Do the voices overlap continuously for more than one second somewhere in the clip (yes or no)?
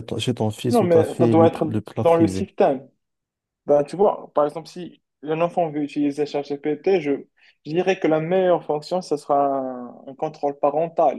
yes